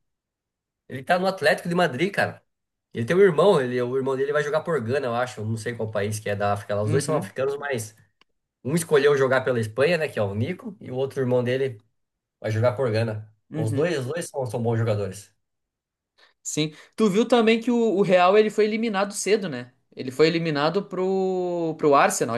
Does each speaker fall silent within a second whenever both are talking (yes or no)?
yes